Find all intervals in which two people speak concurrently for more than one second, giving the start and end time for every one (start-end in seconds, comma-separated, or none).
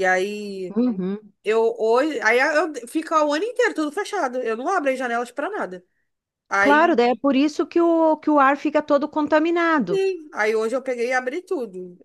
none